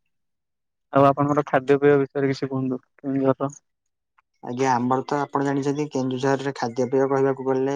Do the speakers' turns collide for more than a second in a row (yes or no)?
no